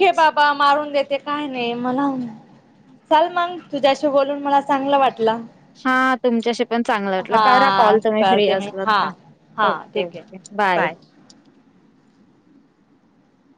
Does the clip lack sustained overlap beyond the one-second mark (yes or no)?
no